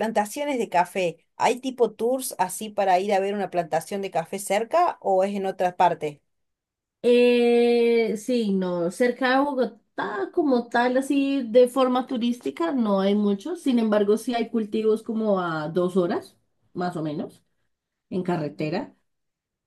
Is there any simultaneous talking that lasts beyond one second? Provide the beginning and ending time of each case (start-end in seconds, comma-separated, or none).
none